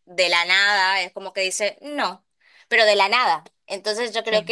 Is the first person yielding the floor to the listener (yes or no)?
no